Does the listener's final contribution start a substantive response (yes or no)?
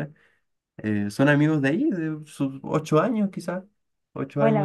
yes